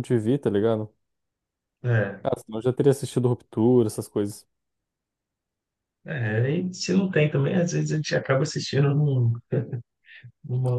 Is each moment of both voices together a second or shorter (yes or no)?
yes